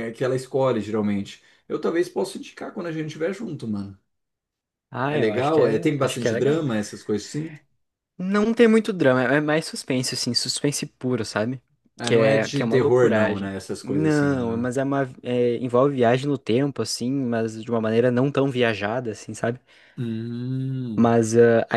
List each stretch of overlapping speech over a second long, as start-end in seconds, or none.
5.1-6.6, 12.0-14.7